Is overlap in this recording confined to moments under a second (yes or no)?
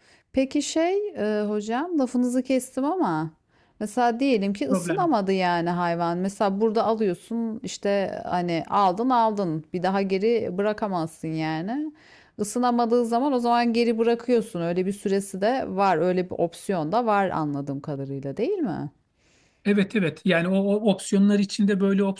yes